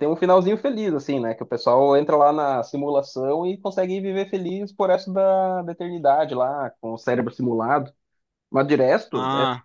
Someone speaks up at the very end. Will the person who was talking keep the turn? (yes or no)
yes